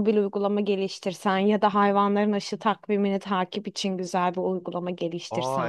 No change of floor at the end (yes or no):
no